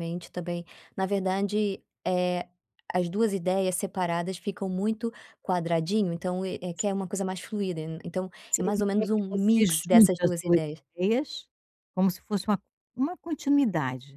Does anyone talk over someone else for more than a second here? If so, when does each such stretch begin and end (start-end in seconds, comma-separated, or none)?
8.5-10.6